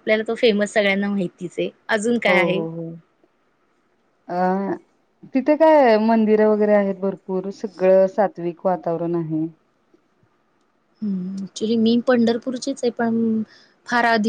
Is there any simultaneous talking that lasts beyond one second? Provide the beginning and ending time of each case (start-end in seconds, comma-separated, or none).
none